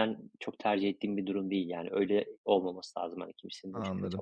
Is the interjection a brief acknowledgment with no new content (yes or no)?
no